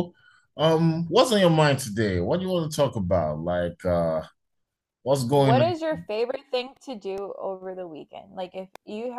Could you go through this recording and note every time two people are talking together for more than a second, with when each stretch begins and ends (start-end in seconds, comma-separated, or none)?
none